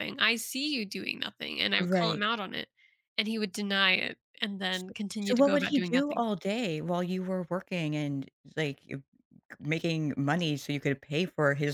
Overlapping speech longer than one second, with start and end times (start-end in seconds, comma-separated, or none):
4.7-6.2